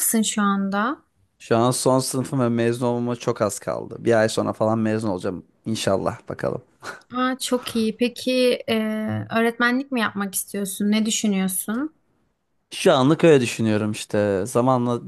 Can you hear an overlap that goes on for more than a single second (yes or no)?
no